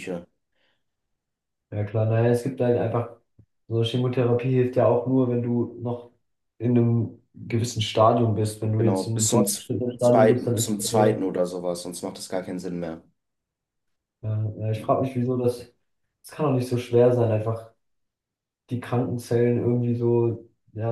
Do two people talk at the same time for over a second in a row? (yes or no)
yes